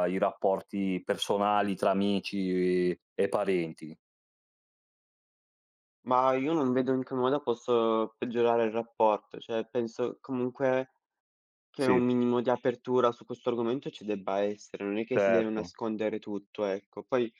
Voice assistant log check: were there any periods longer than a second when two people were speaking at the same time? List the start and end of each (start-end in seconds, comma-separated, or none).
none